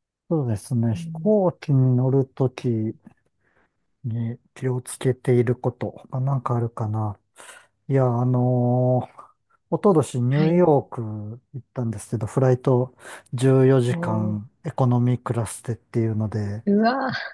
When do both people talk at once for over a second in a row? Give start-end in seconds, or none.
none